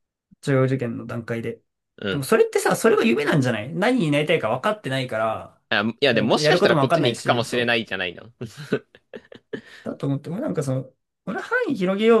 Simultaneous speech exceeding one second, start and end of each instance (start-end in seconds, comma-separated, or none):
6.1-7.8